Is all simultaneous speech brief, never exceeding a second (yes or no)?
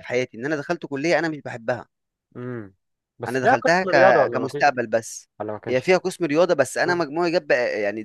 no